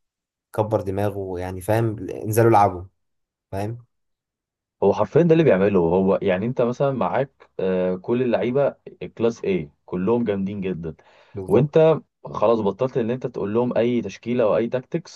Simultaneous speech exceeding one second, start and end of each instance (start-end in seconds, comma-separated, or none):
none